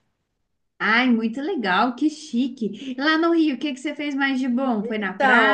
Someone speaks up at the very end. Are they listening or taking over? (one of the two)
taking over